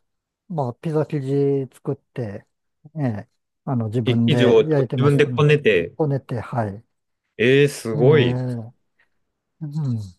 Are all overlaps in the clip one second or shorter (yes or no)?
no